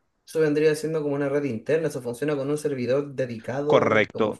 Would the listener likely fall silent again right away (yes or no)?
no